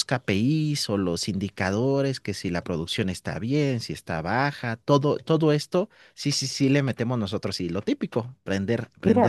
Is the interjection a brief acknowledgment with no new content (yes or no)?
no